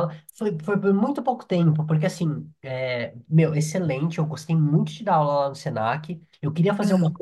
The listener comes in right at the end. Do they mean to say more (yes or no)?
no